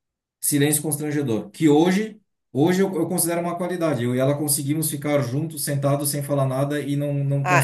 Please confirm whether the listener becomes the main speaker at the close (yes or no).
yes